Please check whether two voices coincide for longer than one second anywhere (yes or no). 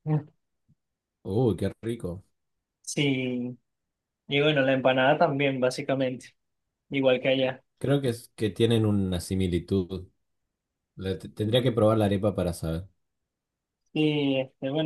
no